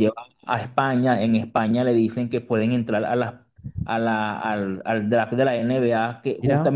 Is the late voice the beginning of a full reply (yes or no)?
no